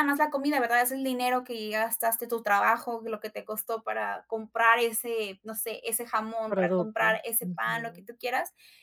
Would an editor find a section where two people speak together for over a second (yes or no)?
yes